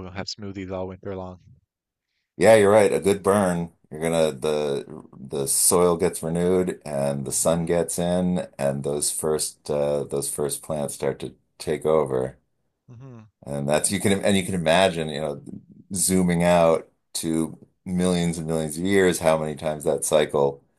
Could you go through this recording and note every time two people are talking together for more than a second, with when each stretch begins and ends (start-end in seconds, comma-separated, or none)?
none